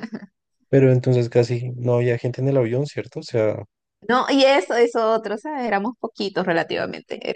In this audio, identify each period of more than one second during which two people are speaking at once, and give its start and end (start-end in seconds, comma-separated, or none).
none